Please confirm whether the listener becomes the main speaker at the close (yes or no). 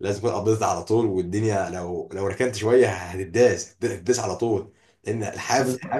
no